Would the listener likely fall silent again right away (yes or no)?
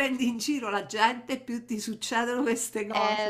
no